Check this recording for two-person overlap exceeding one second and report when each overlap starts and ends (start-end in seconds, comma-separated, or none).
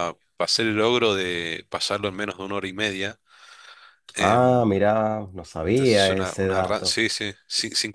5.7-7.0